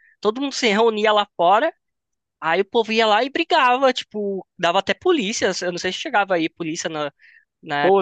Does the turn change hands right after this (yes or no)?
yes